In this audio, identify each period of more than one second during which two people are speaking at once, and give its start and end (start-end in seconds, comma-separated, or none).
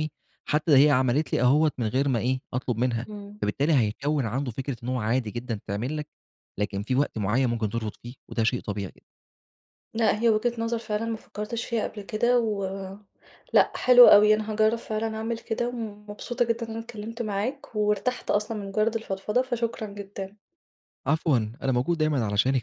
none